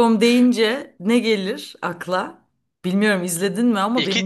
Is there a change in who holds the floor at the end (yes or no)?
yes